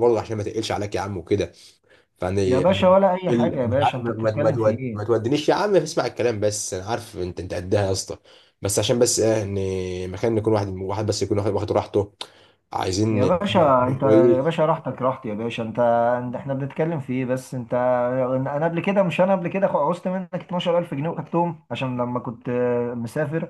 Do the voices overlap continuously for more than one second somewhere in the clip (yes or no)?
yes